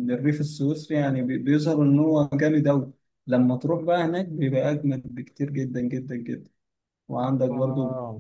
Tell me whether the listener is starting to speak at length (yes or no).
no